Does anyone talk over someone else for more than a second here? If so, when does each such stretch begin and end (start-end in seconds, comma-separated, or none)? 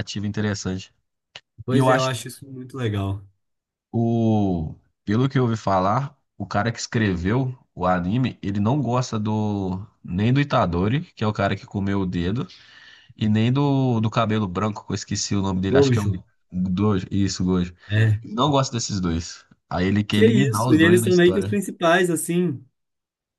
20.1-21.6